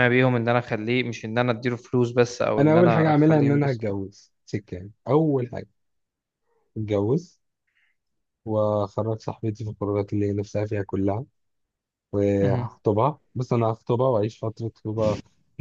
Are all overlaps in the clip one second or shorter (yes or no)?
no